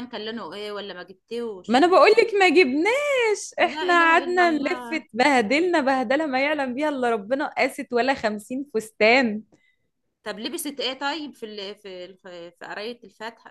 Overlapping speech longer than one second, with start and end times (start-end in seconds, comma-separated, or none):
3.6-5.1